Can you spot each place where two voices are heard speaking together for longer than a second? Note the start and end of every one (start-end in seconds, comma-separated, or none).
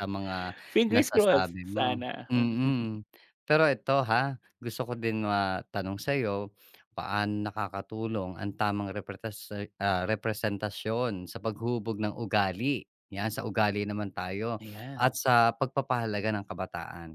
0.9-2.7